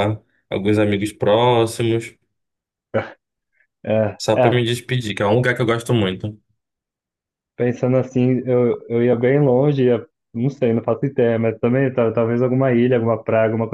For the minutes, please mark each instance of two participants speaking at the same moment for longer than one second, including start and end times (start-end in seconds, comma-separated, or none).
none